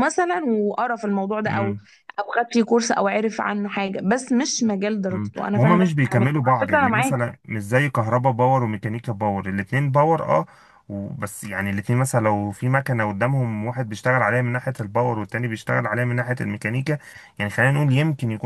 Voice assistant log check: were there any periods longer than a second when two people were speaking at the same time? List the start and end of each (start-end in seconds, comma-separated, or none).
5.1-7.2